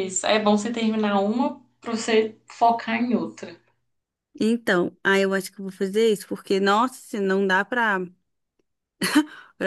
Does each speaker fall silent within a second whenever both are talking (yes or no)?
yes